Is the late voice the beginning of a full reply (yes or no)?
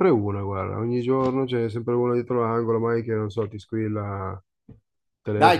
yes